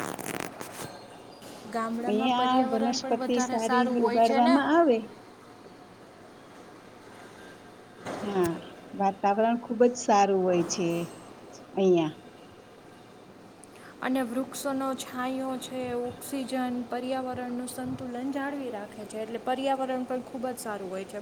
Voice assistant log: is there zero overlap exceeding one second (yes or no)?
no